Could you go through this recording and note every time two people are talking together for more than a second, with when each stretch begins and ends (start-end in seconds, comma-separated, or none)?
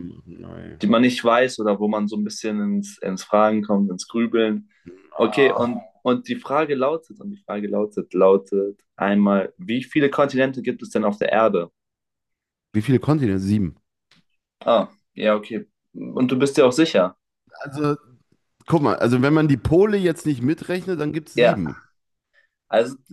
none